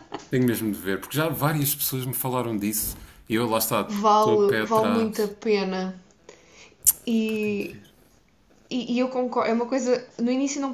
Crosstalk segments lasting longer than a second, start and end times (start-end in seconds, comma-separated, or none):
3.9-5.3